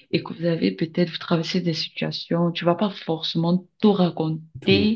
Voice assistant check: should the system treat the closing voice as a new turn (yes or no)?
no